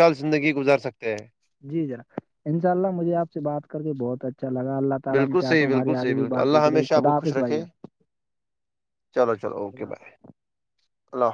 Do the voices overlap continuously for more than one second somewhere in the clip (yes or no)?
yes